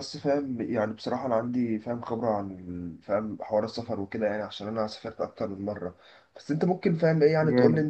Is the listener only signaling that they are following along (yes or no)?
yes